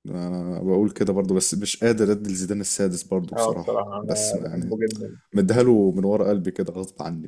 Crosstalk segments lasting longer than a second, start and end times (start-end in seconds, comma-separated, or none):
3.3-4.8